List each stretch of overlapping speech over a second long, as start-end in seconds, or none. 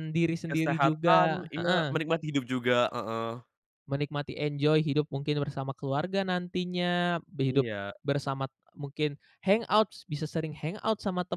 0.5-2.0